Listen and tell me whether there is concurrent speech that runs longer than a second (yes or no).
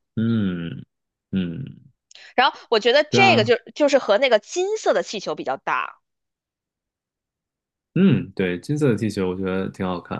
no